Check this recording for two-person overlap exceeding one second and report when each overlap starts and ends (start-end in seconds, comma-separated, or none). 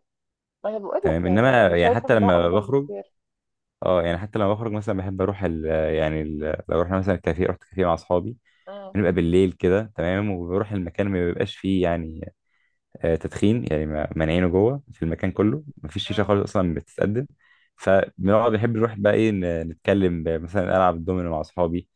1.0-2.9